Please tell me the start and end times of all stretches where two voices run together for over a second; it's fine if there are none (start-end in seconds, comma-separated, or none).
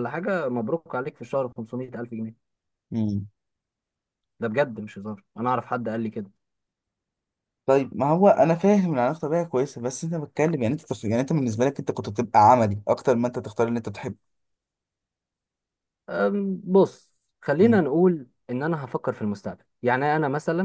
none